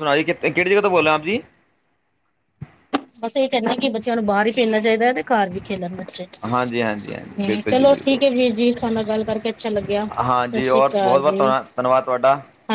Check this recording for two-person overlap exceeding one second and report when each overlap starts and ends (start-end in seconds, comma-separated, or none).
6.5-8.2, 10.1-11.6